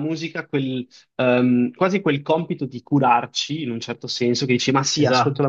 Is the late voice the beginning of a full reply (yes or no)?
no